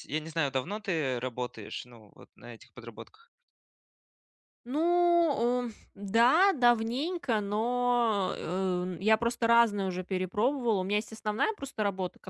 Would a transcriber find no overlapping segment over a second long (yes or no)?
yes